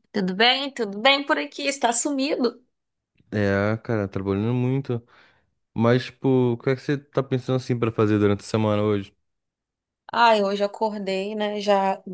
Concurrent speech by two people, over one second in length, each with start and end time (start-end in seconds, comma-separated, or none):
none